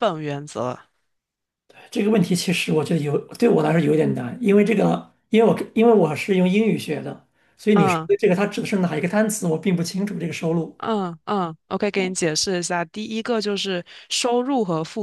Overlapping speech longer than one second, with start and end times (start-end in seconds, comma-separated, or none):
none